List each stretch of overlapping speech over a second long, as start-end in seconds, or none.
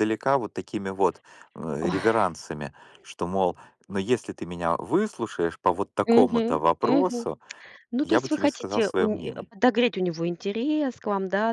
6.0-7.2, 8.0-9.5